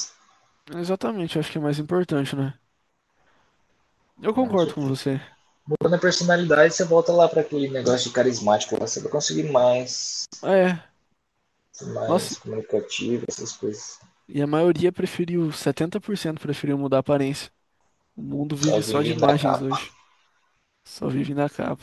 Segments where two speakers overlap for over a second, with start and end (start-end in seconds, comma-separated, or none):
18.5-19.7